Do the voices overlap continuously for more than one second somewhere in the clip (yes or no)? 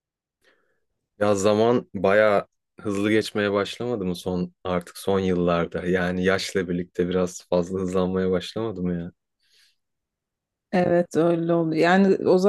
no